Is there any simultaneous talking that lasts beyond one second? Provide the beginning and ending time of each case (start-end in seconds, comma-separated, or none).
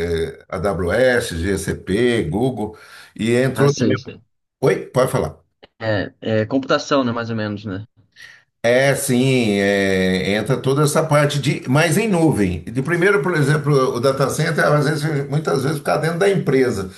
none